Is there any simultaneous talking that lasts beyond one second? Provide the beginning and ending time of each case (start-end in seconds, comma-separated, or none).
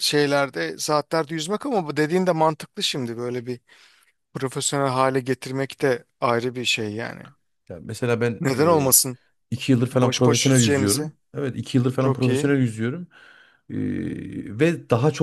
9.9-11.1